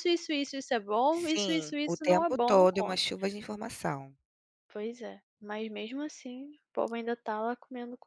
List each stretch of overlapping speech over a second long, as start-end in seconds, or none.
1.1-3.0